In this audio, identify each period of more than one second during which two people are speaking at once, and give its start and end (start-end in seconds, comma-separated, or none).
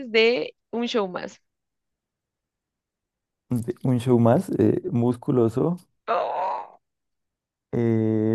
none